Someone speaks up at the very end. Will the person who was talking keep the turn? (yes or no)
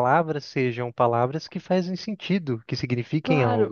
no